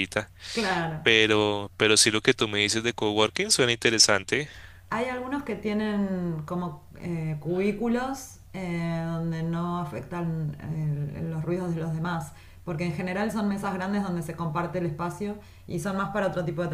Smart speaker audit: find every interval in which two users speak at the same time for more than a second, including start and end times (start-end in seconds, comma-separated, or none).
none